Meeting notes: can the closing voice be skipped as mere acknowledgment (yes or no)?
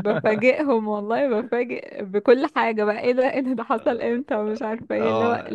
yes